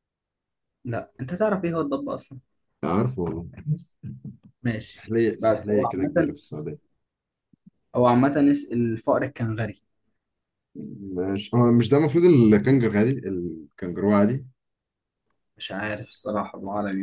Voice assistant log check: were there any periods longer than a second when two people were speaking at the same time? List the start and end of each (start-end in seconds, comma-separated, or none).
4.8-6.3